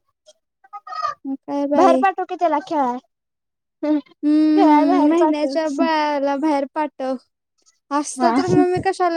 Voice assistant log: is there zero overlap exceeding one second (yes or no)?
no